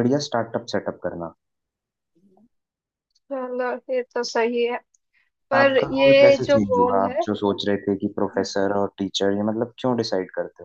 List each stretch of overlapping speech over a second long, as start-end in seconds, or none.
5.5-7.2